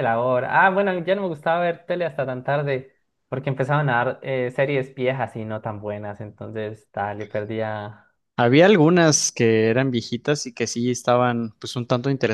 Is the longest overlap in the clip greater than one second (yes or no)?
no